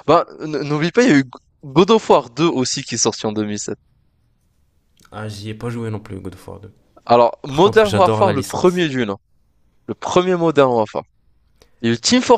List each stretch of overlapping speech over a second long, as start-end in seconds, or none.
7.5-8.9